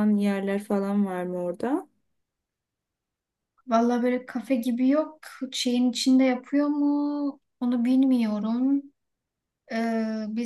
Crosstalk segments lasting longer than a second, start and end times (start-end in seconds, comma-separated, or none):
none